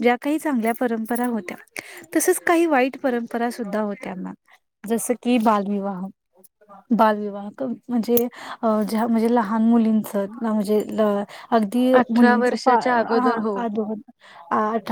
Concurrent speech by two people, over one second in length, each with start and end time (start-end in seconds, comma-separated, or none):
12.0-13.6